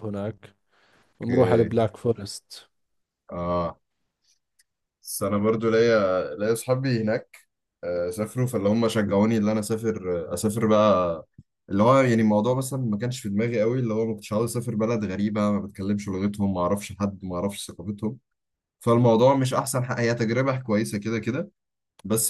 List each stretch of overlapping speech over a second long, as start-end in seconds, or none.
none